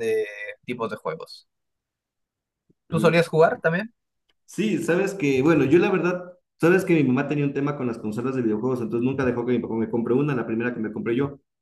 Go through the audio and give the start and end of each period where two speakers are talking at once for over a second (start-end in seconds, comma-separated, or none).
none